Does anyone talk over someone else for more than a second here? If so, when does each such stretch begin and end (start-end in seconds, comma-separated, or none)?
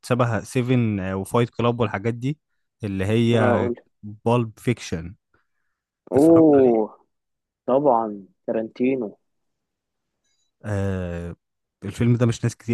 none